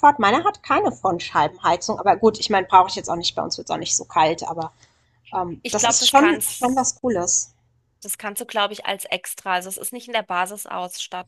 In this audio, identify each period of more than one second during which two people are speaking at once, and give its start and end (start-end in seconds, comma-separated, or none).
5.6-7.0